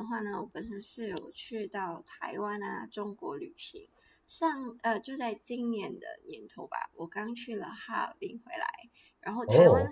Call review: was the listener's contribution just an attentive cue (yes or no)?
yes